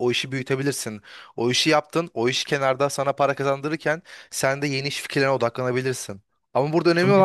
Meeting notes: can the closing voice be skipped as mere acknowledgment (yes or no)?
yes